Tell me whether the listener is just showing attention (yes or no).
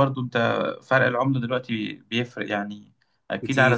yes